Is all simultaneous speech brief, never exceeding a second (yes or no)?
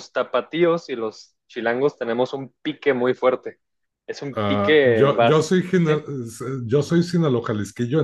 no